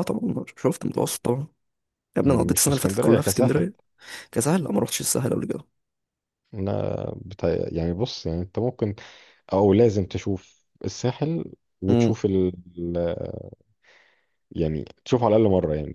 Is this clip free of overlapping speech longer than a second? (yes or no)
no